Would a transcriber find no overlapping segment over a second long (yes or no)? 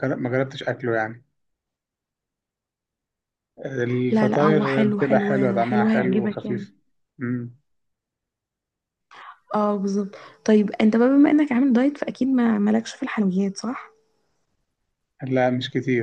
no